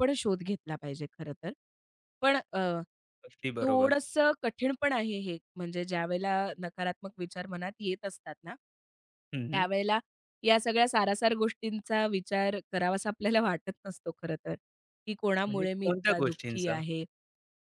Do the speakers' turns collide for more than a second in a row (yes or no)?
yes